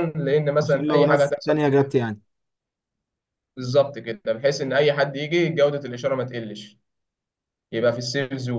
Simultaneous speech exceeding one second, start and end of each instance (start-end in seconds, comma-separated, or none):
0.6-2.0